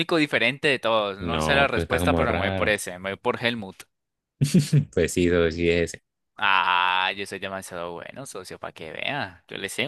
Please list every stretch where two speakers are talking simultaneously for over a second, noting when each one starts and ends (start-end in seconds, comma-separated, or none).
1.2-2.7